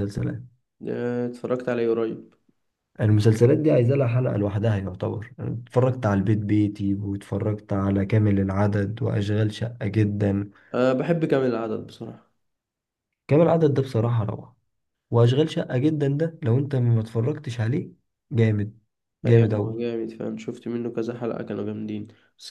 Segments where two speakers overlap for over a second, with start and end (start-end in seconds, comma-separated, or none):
none